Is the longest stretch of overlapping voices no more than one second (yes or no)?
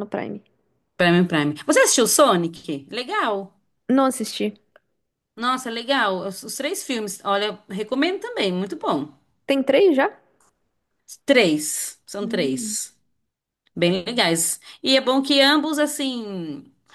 yes